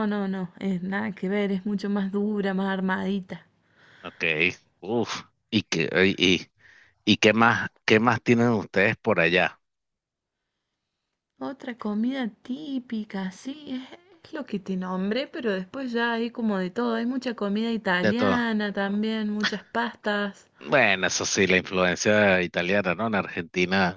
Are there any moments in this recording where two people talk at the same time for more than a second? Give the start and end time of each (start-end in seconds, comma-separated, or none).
none